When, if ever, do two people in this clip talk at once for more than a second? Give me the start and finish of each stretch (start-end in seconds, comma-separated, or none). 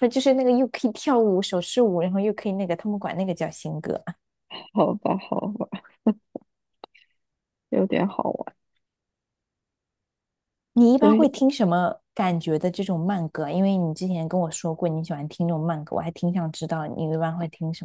none